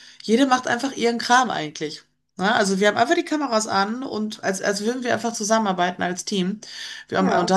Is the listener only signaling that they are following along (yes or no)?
yes